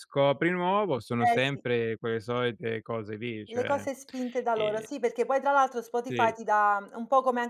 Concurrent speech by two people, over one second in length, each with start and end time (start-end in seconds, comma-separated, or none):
none